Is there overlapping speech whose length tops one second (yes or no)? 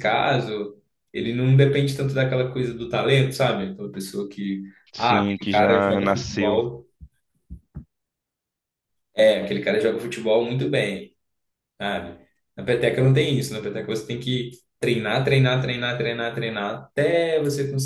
yes